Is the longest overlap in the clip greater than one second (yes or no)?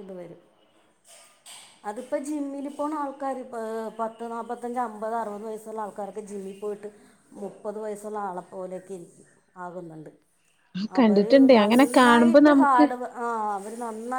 yes